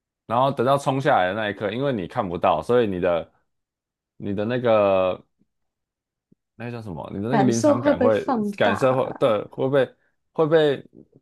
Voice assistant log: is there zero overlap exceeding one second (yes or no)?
no